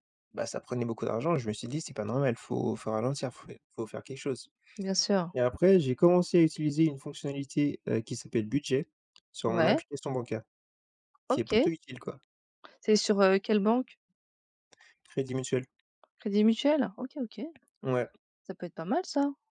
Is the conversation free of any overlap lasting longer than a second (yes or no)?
yes